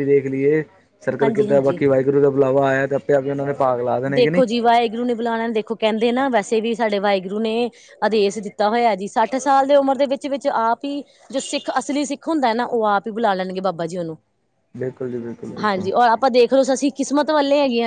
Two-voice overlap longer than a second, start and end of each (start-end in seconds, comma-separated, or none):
none